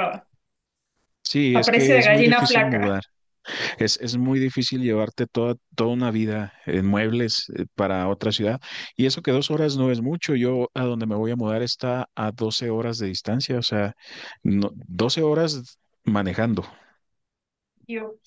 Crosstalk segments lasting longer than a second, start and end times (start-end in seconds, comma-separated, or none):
1.5-3.0